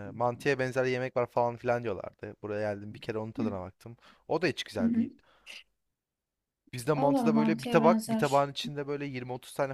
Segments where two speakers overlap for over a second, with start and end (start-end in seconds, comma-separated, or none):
6.9-8.5